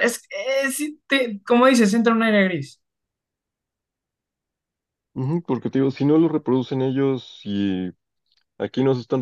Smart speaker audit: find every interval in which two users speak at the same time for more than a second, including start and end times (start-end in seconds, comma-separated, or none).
none